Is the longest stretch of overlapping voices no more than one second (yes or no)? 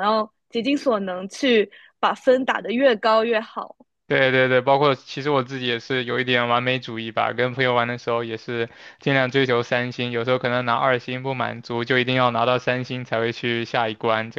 yes